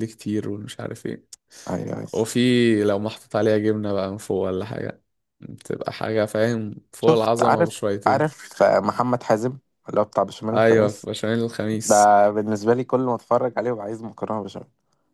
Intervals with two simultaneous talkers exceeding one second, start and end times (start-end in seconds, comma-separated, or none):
7.0-8.3